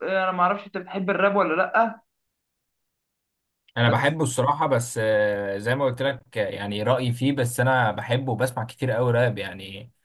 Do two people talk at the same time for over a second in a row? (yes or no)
no